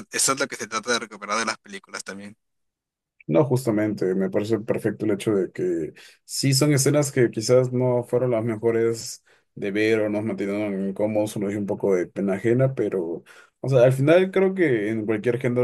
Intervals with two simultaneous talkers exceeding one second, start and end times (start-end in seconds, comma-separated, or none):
none